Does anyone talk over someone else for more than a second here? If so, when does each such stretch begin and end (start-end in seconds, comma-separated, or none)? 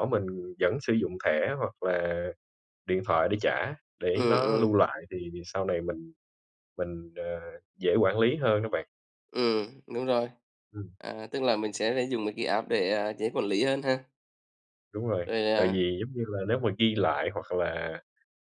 none